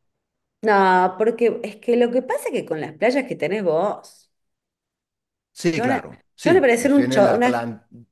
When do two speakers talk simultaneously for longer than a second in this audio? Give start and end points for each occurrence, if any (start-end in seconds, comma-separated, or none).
5.7-7.5